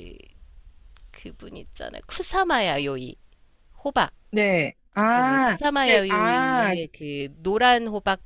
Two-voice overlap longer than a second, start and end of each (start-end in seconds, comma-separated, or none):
5.1-6.8